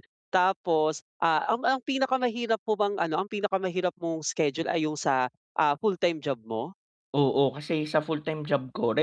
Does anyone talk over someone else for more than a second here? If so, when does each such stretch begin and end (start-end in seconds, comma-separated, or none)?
none